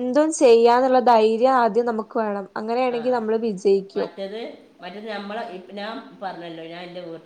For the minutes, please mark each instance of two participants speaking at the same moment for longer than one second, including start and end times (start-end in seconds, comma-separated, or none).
none